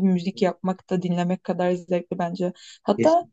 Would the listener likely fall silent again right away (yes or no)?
yes